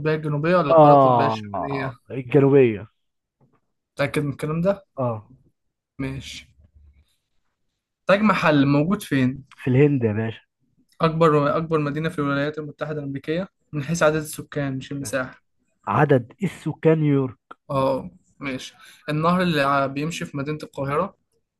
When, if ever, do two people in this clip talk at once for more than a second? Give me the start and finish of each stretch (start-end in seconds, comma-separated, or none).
0.7-1.9